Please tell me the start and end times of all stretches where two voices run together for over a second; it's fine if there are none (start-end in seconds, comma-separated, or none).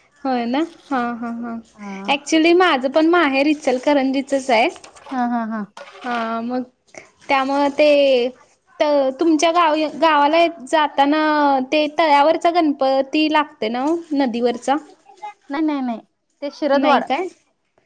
none